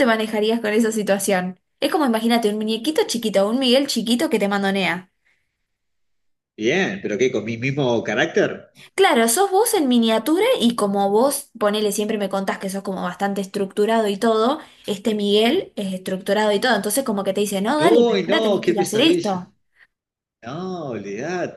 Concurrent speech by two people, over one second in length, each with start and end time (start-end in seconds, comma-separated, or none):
17.8-19.4